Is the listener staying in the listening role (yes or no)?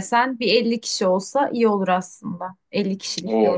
no